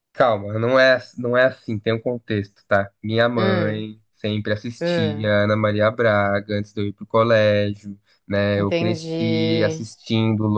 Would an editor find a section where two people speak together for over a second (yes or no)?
yes